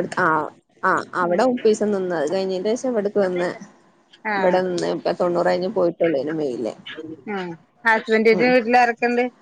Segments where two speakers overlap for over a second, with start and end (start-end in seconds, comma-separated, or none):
none